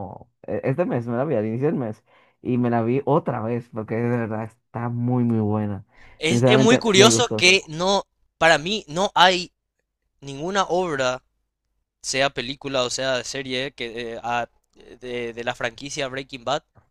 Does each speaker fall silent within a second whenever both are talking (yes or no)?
no